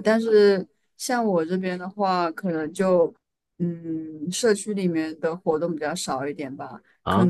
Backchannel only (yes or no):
yes